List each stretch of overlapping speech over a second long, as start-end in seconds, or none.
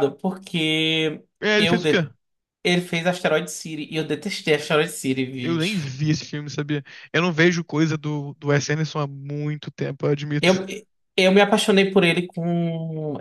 none